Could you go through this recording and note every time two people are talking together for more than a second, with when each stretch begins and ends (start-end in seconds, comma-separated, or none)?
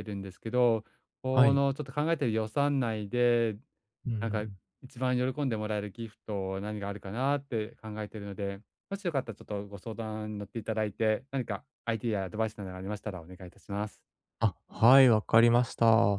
none